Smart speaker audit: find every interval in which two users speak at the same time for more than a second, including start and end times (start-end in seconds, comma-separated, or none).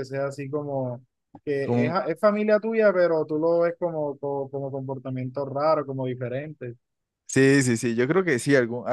none